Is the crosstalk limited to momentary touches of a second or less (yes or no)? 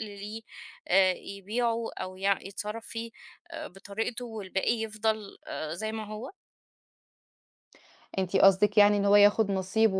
yes